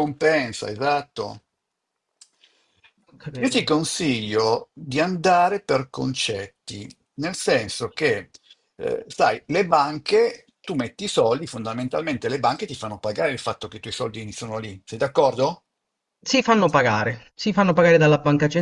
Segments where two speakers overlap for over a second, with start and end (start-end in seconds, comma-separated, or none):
none